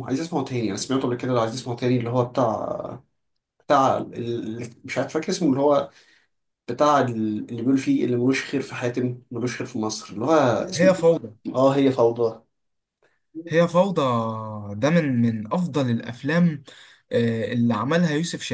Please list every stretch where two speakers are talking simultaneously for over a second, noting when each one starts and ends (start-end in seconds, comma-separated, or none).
none